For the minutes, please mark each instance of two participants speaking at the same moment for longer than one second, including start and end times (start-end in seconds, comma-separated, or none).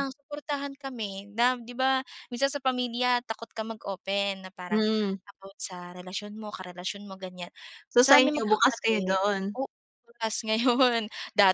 8.0-9.2